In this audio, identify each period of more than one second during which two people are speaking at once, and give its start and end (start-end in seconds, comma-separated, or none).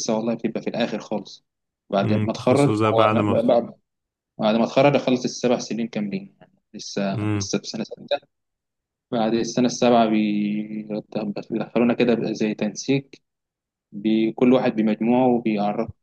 2.0-3.3